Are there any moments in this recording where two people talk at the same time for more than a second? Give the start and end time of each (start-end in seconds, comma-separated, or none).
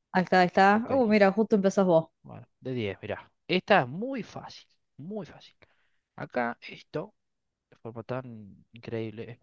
none